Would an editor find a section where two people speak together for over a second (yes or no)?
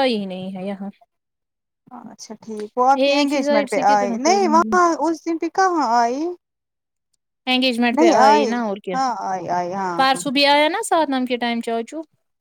yes